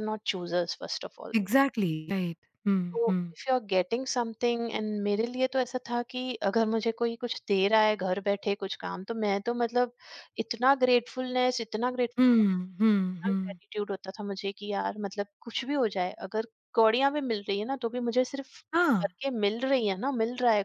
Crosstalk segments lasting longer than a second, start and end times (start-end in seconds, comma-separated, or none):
12.2-13.6